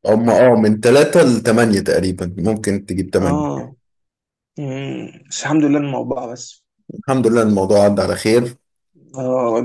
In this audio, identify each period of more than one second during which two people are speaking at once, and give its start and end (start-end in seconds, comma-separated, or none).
none